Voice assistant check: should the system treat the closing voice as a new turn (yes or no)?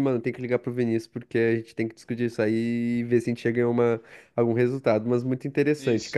no